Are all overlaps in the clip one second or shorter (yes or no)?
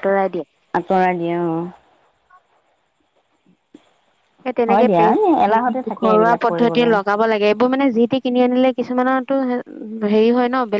no